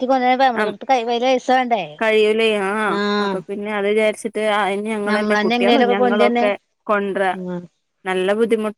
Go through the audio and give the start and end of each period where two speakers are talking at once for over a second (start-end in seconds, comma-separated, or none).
5.1-6.5